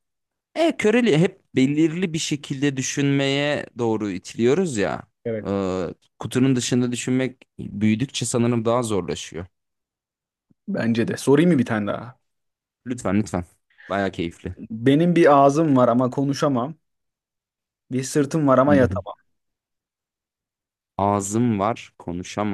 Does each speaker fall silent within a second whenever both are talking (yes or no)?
yes